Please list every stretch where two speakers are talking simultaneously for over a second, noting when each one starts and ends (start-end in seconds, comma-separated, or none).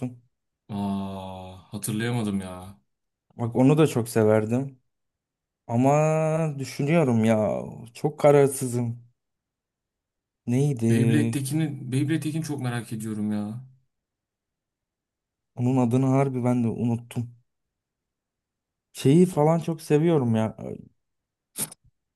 none